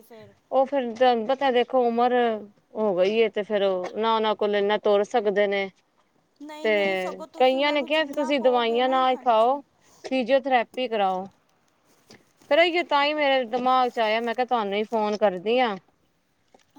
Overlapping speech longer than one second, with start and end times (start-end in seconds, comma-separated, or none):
7.4-9.6